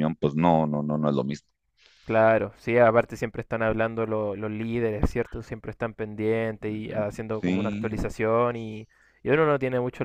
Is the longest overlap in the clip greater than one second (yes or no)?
no